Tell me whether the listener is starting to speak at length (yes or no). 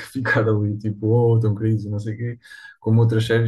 no